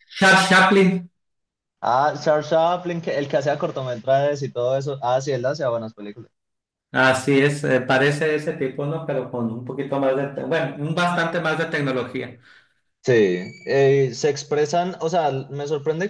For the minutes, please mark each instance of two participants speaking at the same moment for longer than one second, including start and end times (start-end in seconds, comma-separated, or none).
none